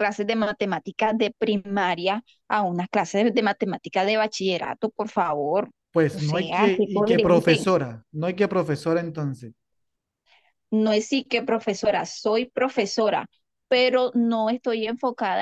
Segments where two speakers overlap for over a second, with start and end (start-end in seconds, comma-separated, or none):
6.1-7.7